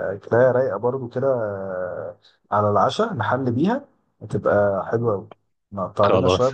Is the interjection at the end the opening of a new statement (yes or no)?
no